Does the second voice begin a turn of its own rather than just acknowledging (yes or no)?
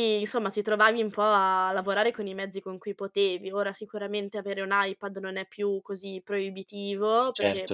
no